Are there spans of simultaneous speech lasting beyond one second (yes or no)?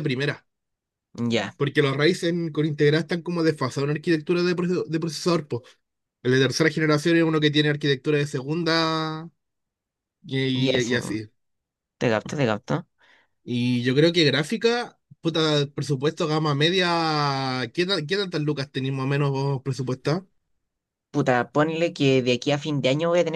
no